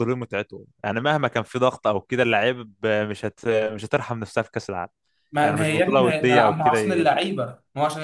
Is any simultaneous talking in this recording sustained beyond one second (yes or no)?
yes